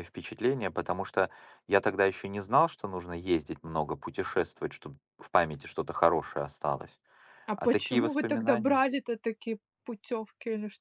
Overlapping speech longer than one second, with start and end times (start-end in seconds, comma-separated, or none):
7.5-8.8